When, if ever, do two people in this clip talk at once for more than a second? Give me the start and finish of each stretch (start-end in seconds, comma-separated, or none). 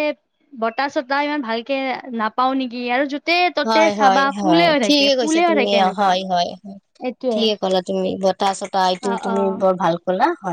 3.7-6.1